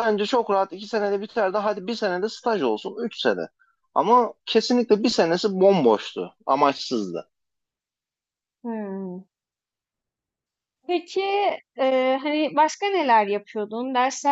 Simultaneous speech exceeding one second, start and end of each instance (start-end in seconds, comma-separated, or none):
none